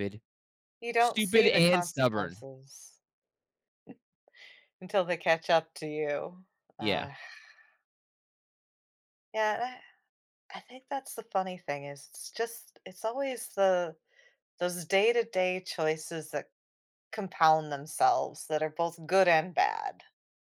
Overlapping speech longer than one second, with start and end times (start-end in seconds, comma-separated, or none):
1.0-2.4